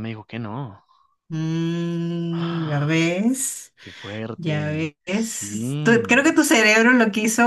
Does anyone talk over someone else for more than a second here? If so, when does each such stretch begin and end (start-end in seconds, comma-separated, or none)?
4.4-6.3